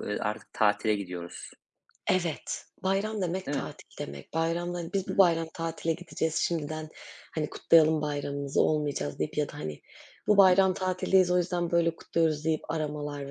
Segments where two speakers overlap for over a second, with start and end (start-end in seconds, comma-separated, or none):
none